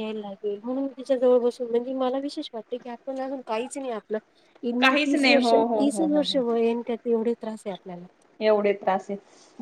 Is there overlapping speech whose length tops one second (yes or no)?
yes